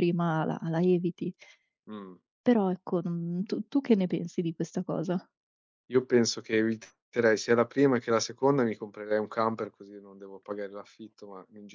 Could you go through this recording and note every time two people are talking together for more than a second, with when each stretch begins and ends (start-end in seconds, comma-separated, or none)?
none